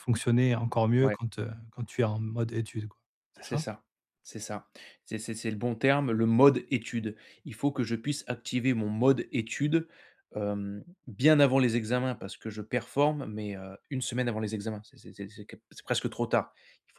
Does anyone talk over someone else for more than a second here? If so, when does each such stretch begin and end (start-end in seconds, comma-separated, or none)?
none